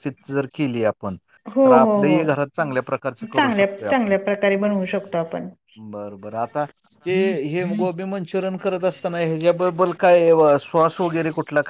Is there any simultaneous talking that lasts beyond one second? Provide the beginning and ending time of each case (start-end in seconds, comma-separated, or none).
1.6-4.1